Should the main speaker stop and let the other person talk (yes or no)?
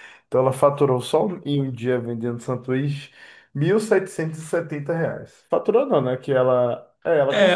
yes